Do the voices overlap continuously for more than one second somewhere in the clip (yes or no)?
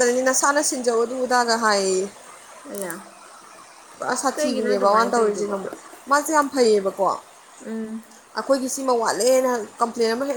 yes